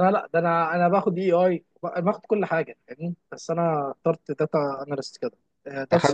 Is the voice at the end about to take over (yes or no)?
no